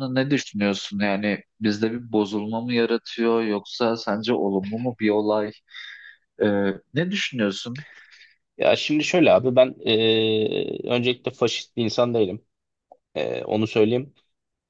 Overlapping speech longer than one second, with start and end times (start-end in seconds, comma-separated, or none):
none